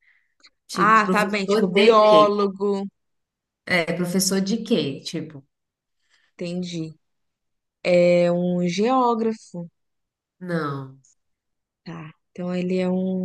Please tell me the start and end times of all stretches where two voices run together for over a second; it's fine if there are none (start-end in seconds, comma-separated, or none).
0.7-2.4